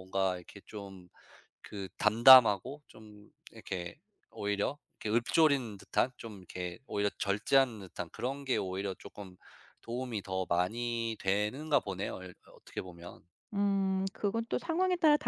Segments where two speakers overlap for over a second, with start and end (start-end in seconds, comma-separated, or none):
none